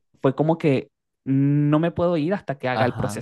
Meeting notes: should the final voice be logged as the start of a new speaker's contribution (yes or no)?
yes